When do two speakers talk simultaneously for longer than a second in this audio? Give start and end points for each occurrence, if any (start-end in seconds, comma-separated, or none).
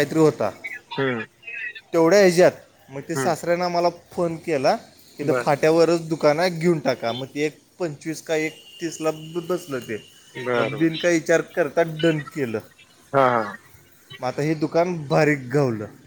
none